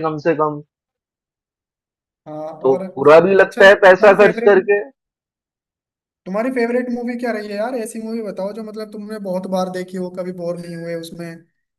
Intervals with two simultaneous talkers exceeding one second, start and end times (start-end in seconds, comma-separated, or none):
2.6-4.5